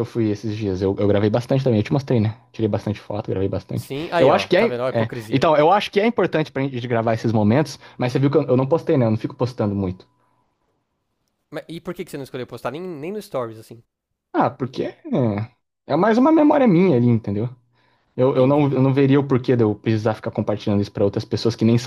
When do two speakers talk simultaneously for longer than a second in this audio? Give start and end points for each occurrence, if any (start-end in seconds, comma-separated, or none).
3.7-5.5